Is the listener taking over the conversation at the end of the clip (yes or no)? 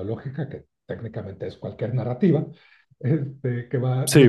yes